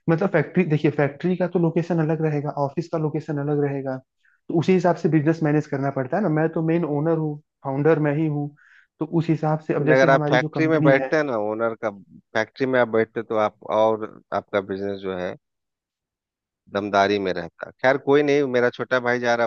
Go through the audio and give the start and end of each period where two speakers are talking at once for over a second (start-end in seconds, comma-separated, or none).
9.8-11.1